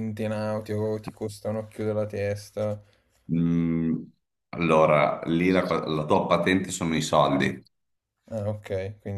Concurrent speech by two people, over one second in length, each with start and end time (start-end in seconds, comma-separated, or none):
none